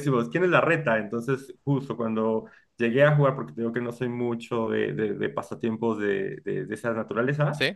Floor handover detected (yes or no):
no